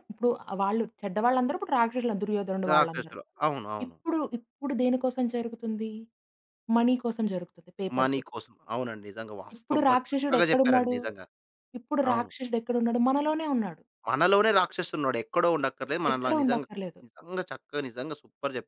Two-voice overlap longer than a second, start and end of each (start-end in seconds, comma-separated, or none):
9.6-10.9